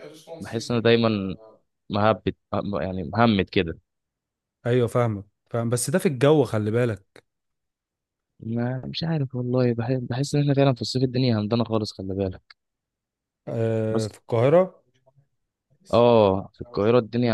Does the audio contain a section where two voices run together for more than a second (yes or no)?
no